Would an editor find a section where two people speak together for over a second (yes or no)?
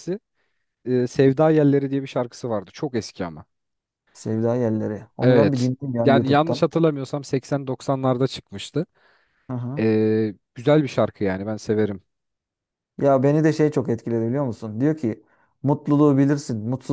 yes